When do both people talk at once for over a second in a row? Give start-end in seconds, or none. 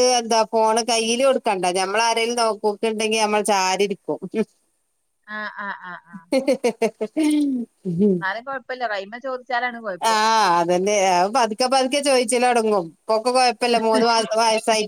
none